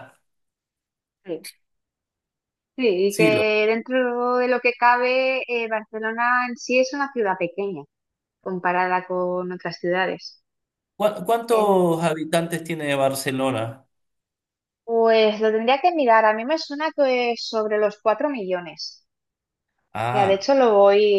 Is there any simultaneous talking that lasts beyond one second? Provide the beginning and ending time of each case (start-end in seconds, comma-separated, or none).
none